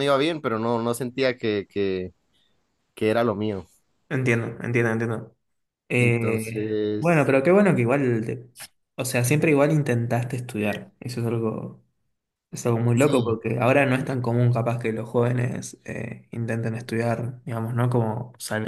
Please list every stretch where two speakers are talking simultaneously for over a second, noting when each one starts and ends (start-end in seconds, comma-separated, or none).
6.0-7.3